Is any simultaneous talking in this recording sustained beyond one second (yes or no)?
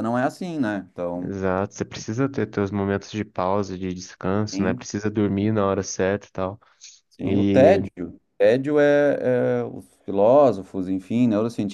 no